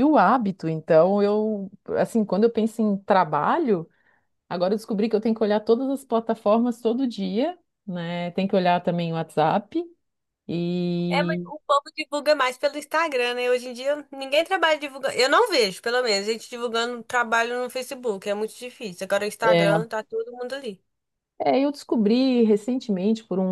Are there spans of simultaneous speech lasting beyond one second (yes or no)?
no